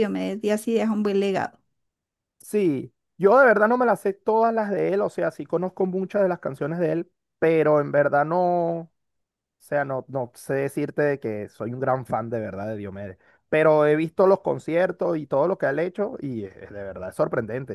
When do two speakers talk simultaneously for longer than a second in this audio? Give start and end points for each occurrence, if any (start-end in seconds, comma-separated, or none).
none